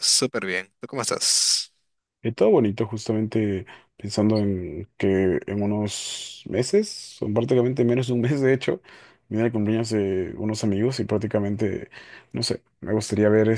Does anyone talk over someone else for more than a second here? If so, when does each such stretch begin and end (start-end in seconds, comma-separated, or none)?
none